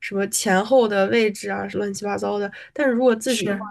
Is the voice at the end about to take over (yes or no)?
no